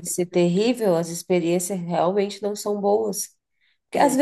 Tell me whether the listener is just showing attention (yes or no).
yes